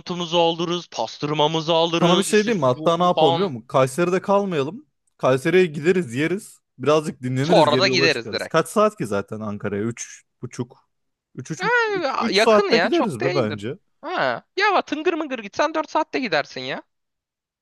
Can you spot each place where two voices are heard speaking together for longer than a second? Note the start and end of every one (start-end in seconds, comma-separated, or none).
2.0-3.5, 7.4-8.7, 12.3-13.8